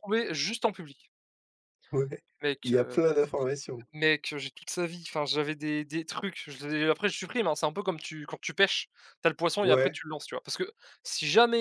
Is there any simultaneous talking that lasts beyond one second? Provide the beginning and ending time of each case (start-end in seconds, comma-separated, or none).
none